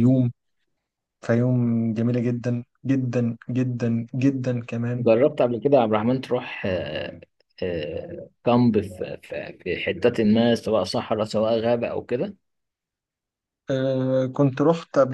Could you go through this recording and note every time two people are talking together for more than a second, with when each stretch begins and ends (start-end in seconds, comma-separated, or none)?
none